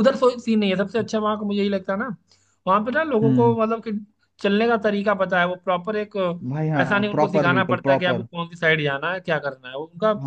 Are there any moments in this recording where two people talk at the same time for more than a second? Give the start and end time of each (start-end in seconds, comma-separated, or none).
6.5-8.3